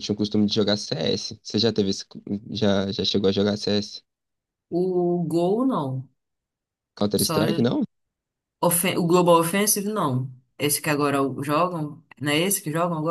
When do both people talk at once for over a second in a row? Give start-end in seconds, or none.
none